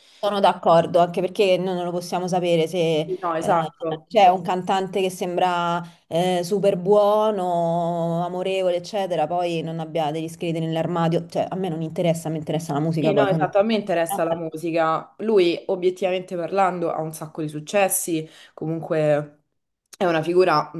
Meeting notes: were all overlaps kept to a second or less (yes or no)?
no